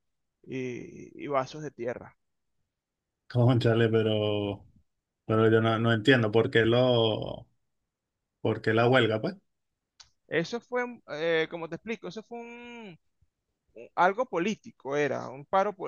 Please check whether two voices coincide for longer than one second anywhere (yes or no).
no